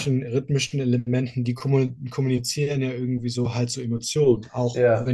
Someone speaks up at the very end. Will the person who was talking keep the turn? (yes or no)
yes